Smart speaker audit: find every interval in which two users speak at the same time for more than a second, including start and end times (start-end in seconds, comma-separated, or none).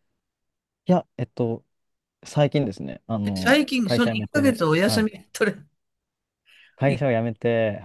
3.2-5.1